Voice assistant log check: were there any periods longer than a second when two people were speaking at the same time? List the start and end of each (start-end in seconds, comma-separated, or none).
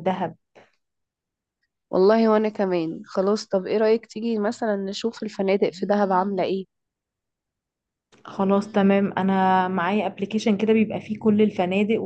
none